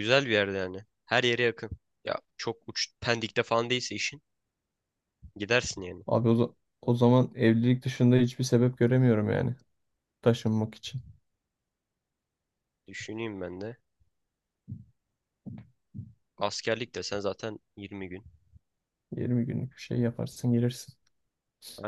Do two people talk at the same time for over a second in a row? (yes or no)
no